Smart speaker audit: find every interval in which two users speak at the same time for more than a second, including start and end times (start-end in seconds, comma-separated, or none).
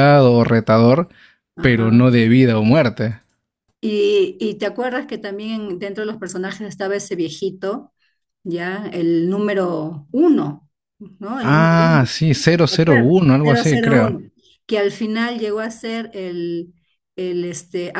12.7-14.2